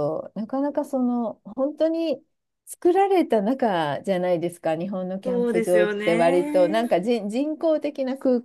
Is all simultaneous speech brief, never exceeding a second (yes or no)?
no